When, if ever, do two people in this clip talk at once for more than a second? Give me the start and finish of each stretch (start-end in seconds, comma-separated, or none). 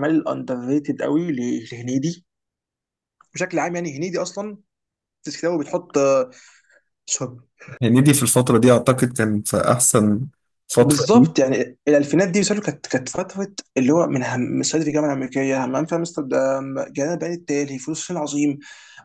none